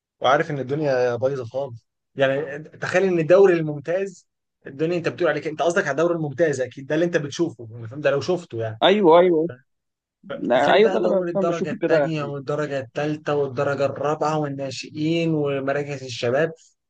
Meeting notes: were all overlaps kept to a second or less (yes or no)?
no